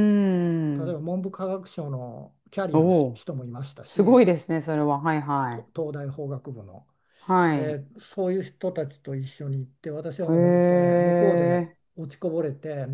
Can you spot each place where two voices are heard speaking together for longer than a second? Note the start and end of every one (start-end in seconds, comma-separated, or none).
10.3-11.8